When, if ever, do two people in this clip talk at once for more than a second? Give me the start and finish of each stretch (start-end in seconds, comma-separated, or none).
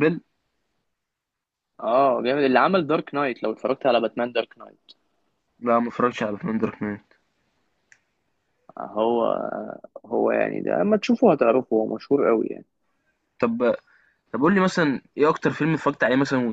none